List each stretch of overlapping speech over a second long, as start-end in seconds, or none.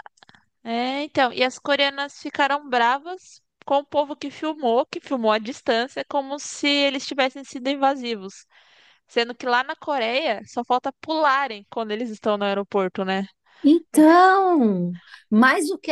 none